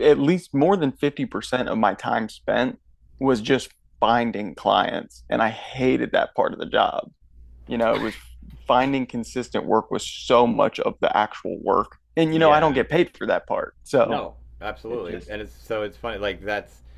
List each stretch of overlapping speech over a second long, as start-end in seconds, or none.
none